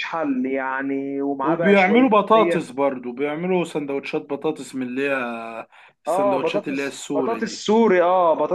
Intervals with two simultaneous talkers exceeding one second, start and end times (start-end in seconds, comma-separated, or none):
1.4-2.7, 6.1-7.6